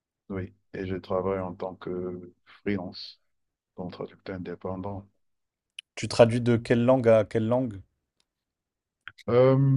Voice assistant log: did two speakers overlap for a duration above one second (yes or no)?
no